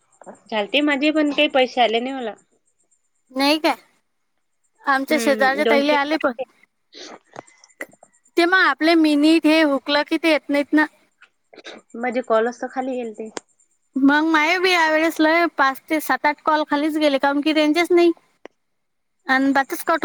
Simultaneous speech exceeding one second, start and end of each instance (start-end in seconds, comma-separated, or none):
4.9-6.2